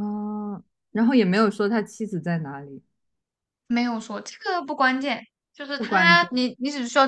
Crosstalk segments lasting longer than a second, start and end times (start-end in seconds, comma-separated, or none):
none